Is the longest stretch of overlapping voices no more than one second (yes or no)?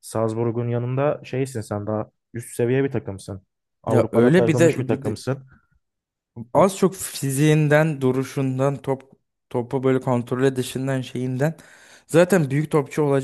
no